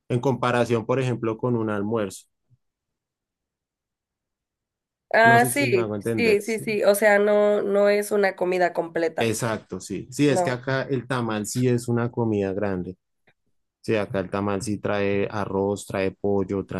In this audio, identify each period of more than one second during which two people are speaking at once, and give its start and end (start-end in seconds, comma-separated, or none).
5.3-6.7